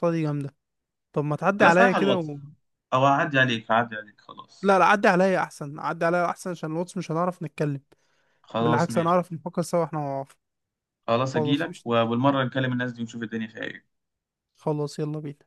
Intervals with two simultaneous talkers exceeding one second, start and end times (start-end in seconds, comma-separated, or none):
none